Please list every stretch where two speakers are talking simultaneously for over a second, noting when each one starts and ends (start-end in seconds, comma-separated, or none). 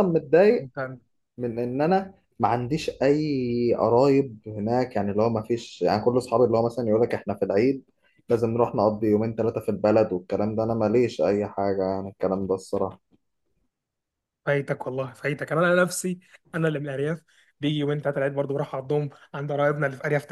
none